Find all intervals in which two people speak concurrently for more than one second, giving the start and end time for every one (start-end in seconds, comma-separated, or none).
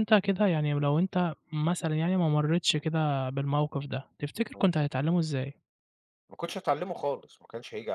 none